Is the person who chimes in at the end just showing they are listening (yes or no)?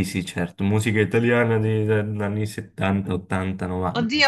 no